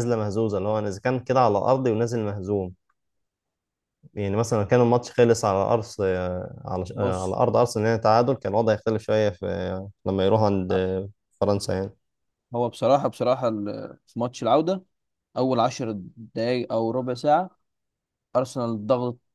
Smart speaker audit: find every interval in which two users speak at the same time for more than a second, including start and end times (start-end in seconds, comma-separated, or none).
none